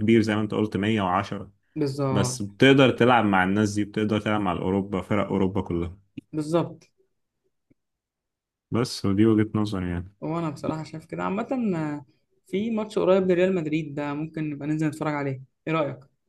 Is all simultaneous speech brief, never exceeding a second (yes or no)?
yes